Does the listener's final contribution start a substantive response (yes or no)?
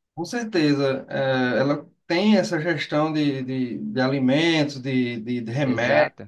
no